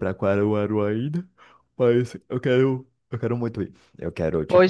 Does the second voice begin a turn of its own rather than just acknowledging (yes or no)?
yes